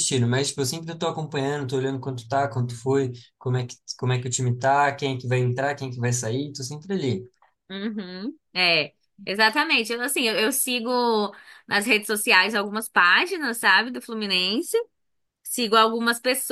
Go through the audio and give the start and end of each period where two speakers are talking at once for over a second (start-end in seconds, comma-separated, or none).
none